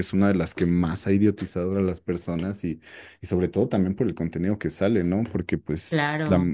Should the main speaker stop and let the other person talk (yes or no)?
no